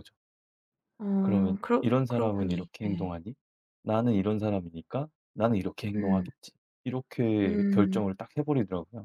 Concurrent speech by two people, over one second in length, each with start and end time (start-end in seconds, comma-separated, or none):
1.2-3.1